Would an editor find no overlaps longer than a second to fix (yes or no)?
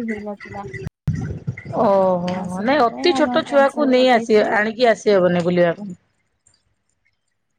no